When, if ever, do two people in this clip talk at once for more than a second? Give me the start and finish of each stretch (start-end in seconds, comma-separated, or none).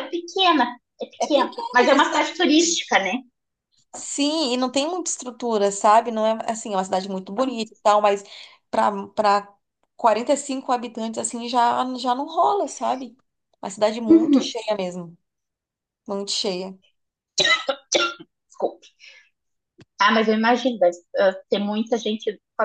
1.2-2.8